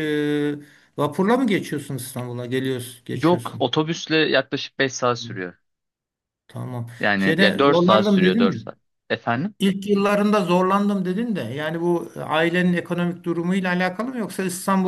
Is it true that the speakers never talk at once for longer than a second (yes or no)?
no